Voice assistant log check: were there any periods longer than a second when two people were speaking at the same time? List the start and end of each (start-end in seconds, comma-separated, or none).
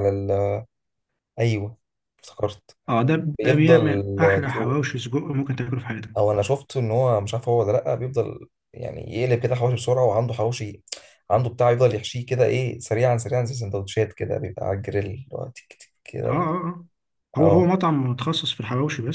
3.4-4.8